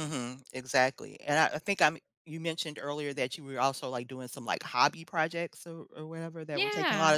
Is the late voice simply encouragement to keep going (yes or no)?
no